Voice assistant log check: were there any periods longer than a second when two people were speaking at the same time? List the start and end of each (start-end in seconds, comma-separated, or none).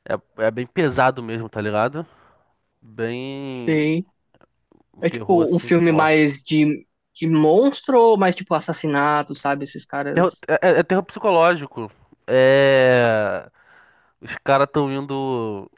5.1-6.3